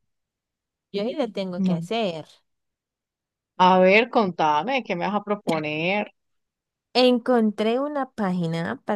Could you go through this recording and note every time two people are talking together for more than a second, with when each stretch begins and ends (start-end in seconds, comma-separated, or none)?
none